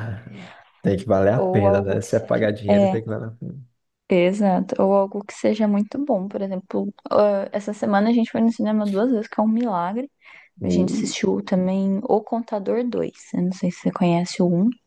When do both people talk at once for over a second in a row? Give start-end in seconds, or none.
1.4-3.0